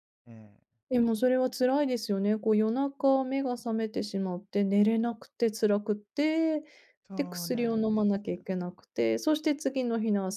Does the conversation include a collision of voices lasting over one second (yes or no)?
yes